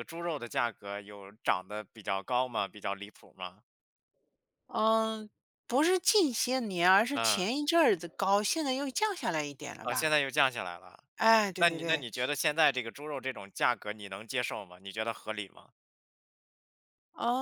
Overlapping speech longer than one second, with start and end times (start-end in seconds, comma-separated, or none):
none